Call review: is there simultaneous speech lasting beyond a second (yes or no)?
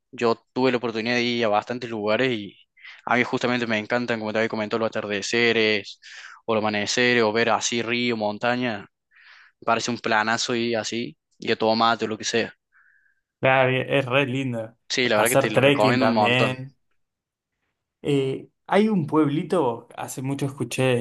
yes